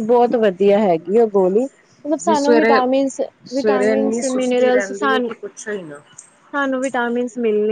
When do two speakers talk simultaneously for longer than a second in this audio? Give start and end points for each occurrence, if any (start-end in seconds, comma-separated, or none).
3.5-5.3